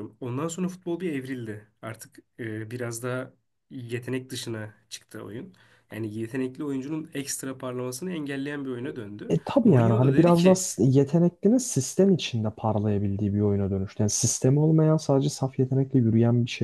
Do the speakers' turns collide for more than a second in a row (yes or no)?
yes